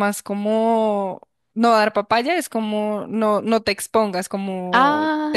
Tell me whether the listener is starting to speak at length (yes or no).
no